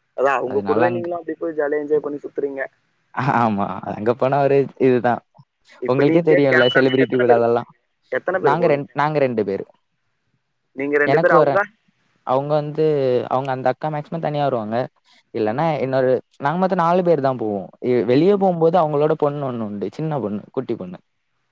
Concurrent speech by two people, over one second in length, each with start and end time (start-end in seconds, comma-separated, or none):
5.9-7.6